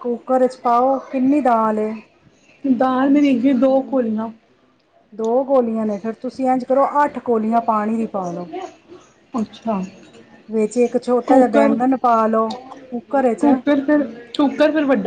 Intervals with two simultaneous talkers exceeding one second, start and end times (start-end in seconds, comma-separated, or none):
none